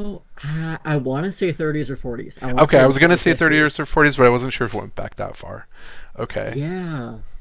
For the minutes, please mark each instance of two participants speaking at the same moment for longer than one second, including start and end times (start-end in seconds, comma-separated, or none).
2.6-4.0